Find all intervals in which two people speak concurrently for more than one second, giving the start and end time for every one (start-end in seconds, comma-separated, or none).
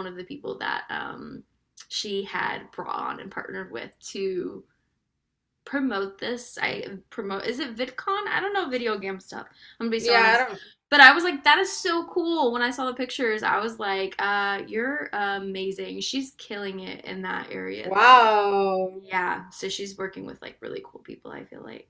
none